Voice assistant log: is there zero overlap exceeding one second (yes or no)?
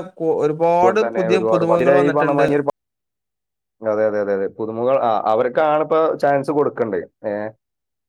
no